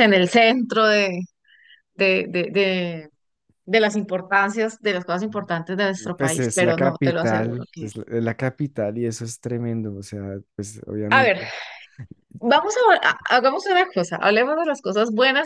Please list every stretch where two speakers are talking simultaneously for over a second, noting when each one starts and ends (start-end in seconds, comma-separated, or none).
6.2-7.9